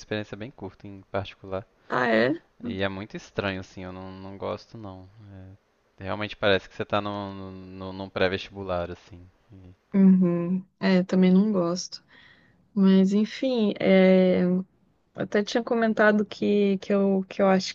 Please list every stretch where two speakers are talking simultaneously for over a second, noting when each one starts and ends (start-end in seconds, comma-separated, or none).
none